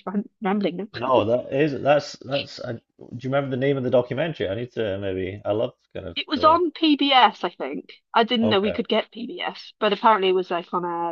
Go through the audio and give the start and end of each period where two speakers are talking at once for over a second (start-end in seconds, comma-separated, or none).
none